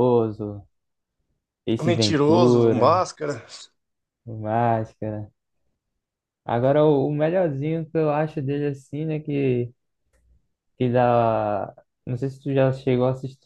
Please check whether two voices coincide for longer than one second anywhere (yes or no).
yes